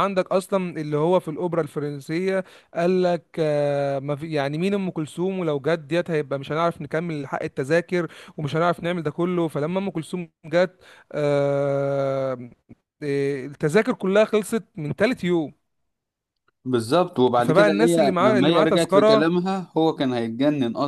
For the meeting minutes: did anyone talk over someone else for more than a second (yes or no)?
yes